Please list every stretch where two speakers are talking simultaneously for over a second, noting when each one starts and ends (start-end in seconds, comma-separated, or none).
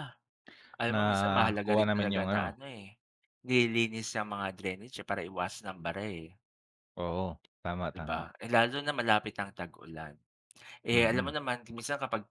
0.9-2.6